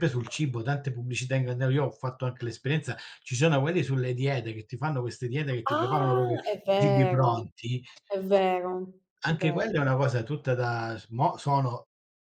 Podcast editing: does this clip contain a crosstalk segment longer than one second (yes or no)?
yes